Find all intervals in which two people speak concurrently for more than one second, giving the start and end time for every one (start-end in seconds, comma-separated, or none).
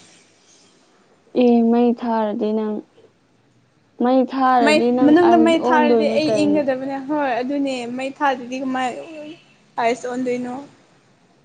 4.6-6.6